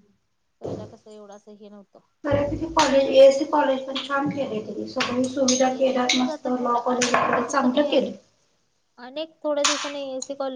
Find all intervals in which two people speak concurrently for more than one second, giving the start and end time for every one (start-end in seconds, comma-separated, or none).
5.8-8.1